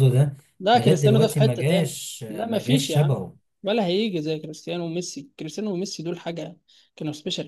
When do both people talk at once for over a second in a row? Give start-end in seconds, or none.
0.7-3.2